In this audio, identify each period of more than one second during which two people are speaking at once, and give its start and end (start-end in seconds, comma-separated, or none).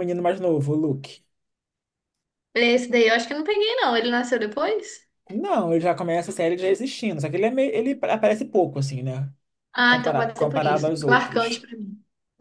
9.9-11.7